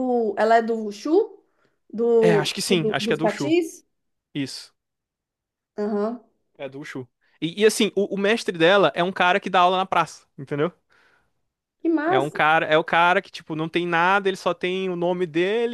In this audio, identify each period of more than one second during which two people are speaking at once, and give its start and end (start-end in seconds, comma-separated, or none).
2.2-3.5